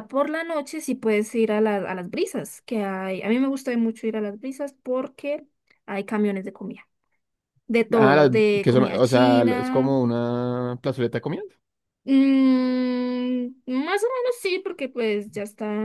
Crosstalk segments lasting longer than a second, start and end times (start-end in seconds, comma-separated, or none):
7.9-9.9